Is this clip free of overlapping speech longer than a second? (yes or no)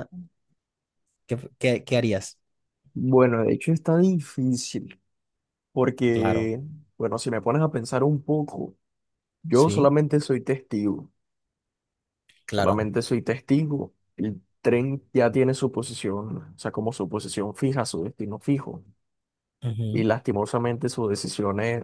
yes